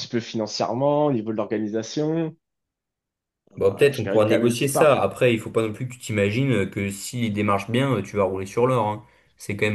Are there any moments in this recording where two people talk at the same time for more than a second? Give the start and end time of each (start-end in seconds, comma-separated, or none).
3.7-5.0